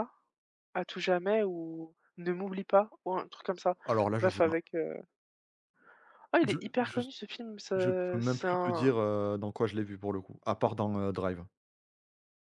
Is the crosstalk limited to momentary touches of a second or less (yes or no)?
no